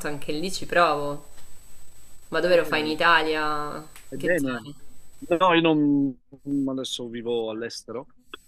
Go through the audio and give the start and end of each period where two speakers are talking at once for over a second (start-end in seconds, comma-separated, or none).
none